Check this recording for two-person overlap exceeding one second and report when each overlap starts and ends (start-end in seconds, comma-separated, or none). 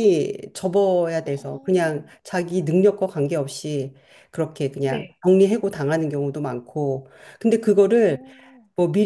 none